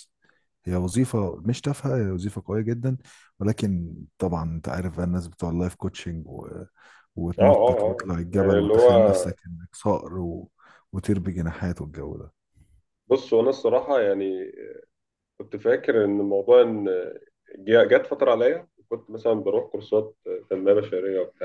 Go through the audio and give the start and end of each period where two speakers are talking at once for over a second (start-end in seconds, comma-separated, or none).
7.4-8.9